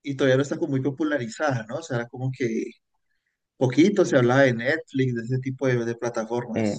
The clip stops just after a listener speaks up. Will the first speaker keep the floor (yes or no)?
no